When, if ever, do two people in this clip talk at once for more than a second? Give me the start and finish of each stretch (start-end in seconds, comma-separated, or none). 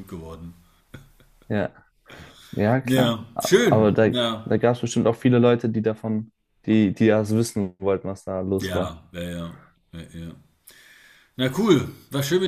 2.8-4.6